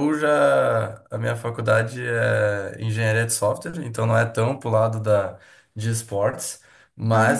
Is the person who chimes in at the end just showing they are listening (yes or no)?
yes